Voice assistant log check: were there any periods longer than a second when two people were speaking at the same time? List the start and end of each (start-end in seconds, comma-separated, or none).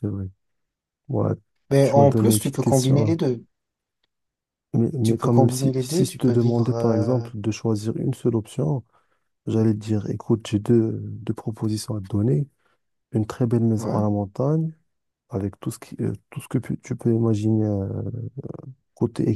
1.8-3.2, 5.0-7.3